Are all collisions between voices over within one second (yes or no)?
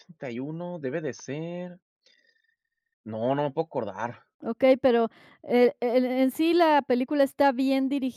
yes